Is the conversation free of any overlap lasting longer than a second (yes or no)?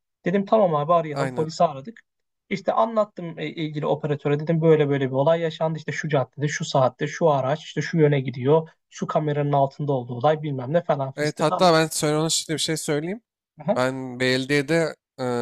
yes